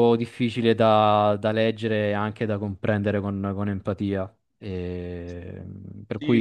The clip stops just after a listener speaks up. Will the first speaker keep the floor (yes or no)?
no